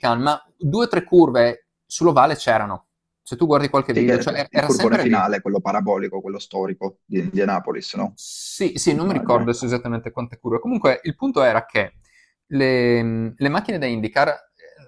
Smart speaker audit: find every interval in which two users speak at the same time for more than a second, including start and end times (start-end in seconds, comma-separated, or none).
3.9-5.2